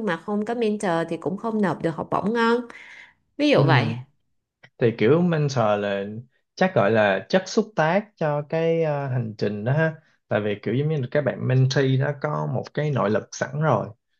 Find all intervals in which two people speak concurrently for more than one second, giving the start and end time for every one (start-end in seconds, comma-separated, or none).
none